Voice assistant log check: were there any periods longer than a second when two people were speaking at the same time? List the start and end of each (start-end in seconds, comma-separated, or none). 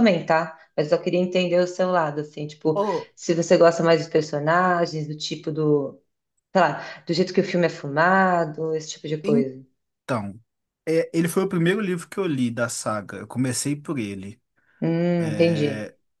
none